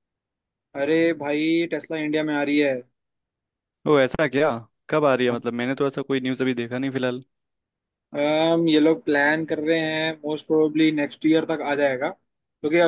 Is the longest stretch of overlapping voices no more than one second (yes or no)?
yes